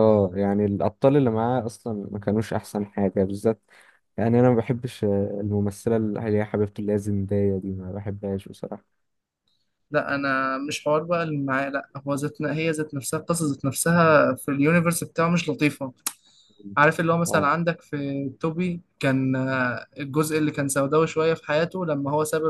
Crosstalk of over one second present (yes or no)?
no